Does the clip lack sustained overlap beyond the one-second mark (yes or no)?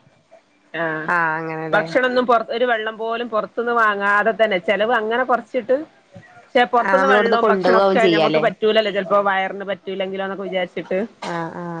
no